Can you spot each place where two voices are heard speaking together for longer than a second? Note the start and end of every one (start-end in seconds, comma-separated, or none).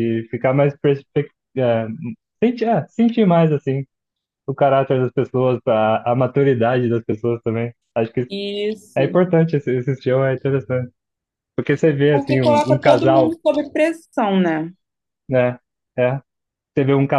12.1-13.4